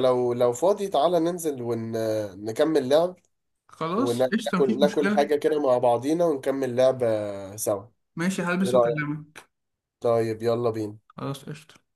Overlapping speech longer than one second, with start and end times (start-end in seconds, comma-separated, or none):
4.0-5.3